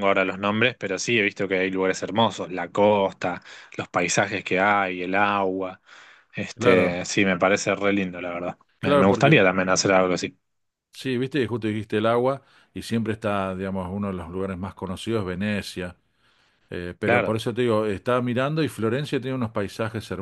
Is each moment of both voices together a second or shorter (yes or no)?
yes